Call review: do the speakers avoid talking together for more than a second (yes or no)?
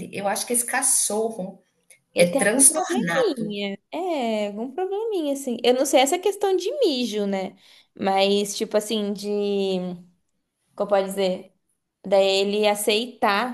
no